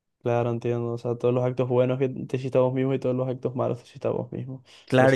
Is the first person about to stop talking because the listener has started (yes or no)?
yes